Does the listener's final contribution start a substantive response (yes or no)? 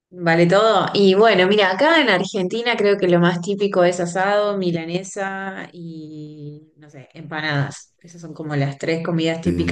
no